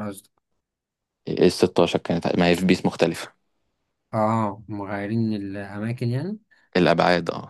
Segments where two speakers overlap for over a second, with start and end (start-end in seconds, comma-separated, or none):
none